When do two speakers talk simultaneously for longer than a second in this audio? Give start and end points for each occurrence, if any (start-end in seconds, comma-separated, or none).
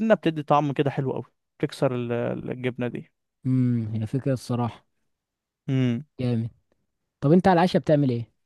none